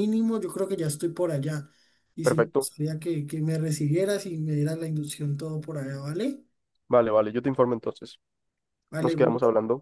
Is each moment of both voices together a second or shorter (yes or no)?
yes